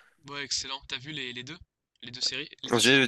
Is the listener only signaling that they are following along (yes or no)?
no